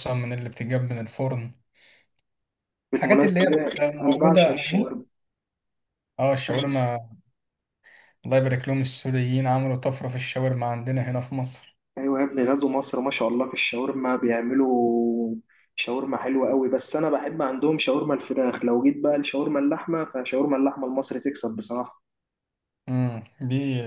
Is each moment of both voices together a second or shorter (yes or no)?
no